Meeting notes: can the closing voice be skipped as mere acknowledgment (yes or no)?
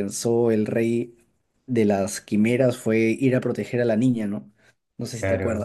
no